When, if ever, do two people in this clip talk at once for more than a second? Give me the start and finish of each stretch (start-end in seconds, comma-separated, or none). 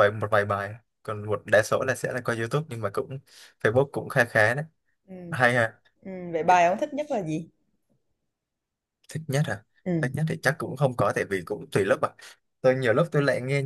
none